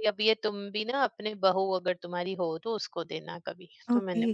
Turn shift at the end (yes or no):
yes